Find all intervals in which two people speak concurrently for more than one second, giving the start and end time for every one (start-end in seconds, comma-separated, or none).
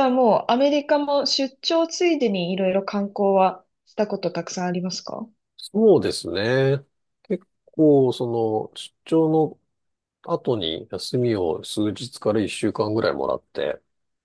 none